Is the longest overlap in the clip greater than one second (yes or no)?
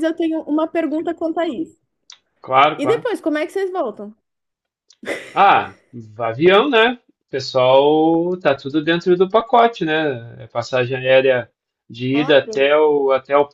no